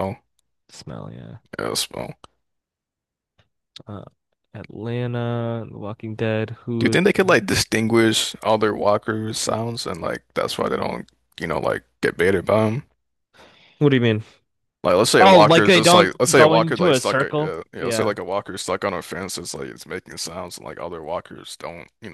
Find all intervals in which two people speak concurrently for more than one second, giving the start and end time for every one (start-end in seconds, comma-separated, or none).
15.2-18.1